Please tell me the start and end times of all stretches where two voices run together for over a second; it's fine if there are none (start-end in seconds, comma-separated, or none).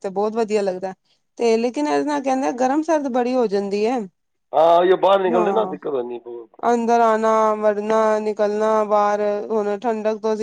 none